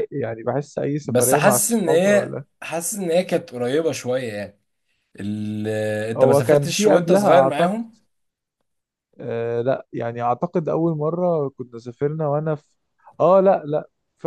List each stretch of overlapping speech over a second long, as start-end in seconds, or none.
1.0-2.4, 6.2-7.7